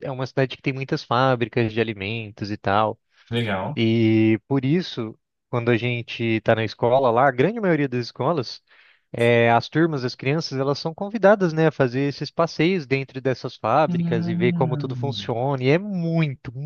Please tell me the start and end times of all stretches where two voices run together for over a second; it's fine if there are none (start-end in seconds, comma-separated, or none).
13.9-15.3